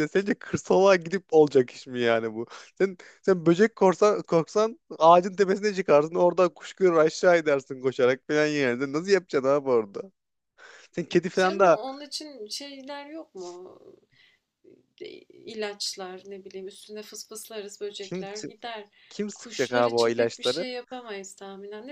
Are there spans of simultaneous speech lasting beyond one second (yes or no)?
yes